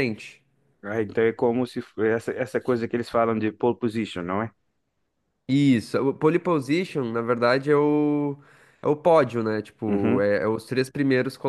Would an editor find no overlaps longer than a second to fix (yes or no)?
yes